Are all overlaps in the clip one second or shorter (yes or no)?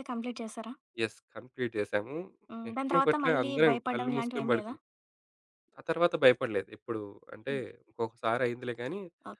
no